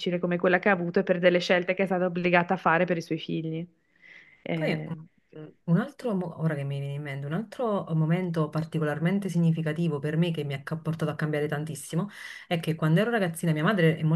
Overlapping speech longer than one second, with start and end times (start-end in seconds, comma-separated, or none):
none